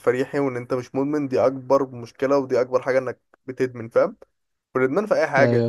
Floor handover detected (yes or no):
no